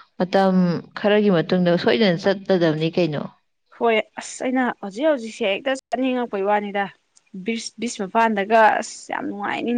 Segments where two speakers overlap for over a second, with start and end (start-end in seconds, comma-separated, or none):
none